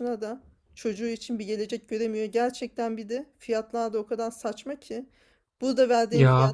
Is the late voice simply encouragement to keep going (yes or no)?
yes